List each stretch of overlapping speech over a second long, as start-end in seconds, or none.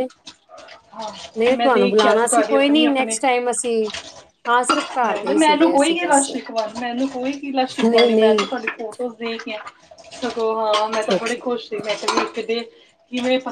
1.4-2.9, 5.0-6.3